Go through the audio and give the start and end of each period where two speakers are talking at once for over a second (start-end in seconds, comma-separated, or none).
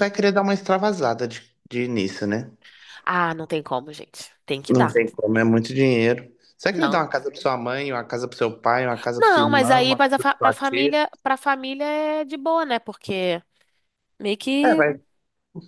9.2-11.0